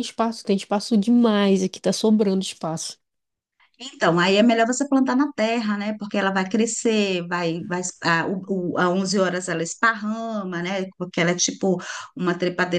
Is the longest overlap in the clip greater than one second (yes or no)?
no